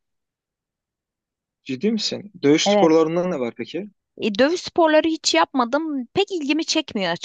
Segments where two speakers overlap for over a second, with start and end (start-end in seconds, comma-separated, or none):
none